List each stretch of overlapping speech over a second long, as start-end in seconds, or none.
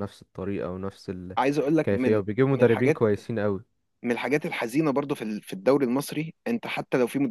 1.4-3.0